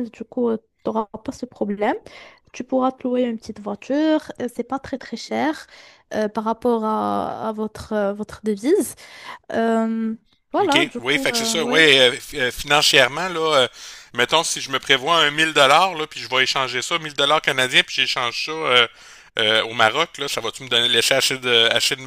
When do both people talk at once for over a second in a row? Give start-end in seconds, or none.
10.6-11.9